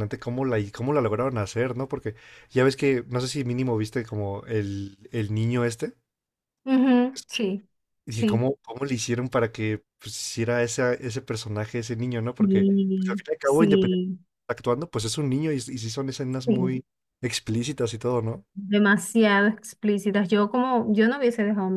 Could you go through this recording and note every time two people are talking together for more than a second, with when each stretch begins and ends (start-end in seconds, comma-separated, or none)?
12.4-14.1